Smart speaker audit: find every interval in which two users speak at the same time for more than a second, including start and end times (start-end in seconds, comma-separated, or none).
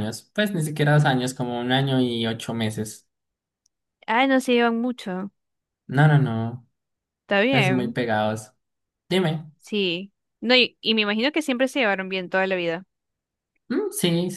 none